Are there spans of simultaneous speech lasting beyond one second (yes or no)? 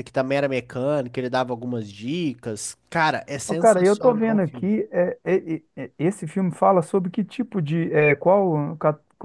yes